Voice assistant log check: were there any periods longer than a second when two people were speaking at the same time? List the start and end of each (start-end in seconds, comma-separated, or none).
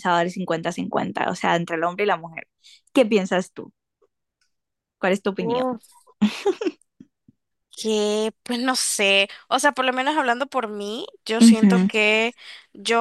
none